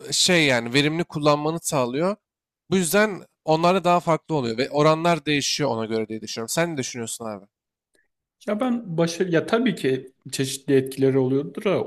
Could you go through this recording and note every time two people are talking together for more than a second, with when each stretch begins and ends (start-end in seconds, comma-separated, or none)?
none